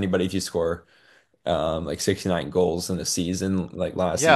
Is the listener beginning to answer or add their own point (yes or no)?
yes